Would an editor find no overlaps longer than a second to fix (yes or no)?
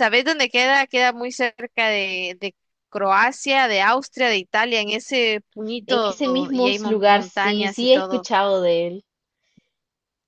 no